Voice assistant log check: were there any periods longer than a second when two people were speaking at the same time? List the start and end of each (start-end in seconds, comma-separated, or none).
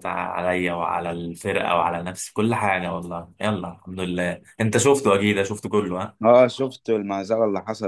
none